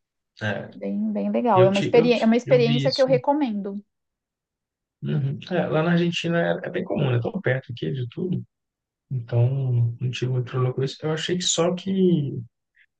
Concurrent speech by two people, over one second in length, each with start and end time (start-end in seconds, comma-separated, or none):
1.5-3.2